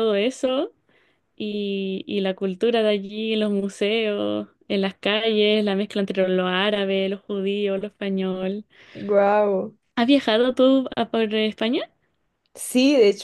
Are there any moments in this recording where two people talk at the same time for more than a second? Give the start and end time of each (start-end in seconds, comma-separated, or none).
none